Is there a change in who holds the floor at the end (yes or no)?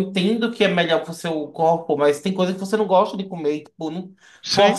no